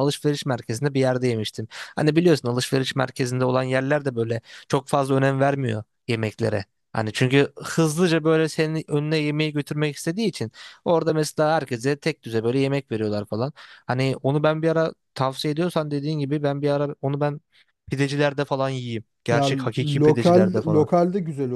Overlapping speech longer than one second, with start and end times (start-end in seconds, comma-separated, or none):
19.3-20.9